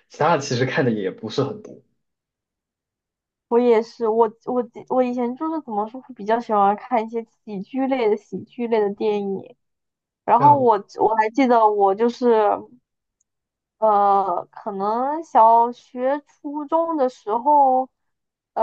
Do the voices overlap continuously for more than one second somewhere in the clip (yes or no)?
no